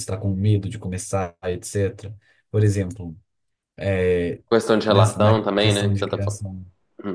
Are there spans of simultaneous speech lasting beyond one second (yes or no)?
yes